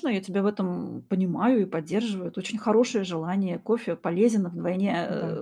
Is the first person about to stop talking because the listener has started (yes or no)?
no